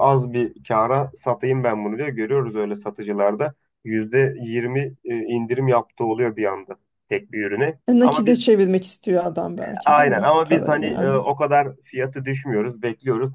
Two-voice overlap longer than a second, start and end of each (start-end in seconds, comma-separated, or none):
9.8-11.2